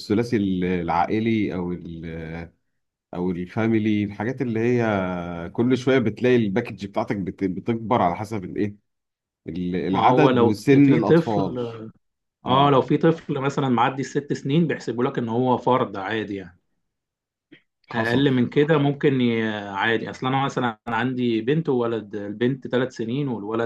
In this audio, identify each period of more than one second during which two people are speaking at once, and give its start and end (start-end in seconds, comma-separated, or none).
9.9-11.6